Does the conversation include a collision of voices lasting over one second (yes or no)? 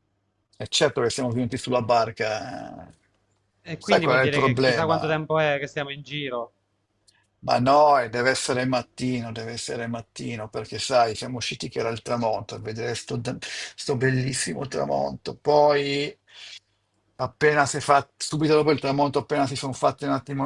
yes